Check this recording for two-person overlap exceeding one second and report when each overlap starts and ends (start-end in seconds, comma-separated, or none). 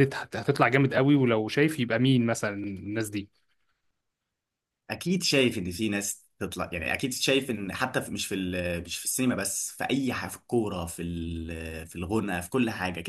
none